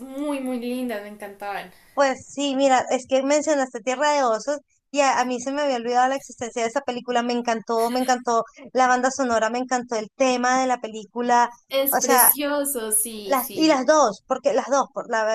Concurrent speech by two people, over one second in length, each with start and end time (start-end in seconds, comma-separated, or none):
none